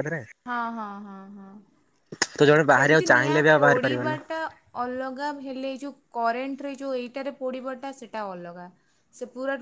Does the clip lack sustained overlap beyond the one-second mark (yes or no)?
no